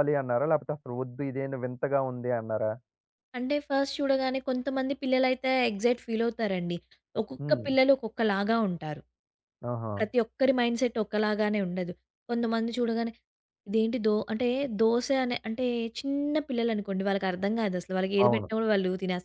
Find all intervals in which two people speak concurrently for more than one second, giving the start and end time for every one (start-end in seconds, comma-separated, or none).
none